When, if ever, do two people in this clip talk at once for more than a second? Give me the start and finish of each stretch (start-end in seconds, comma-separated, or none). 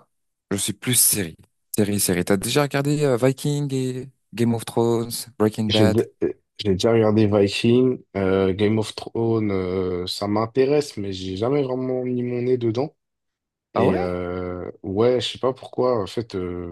none